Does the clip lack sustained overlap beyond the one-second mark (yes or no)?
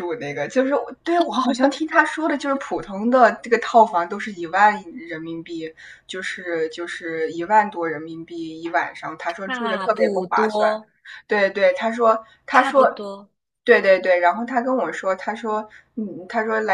no